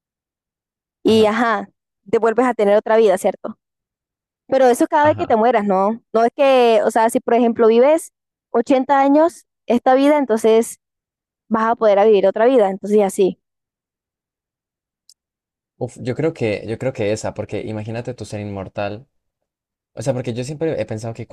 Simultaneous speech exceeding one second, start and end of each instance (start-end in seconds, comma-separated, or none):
none